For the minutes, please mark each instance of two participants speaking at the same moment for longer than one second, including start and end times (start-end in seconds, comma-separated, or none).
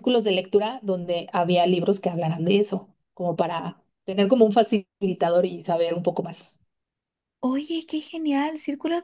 none